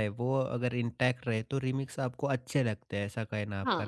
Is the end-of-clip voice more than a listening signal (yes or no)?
no